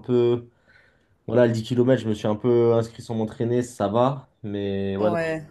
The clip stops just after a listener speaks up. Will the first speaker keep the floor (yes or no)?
yes